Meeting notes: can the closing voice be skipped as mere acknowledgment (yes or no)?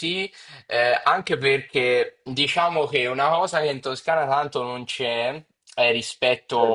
yes